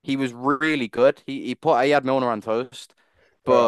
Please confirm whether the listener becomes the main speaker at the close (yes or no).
yes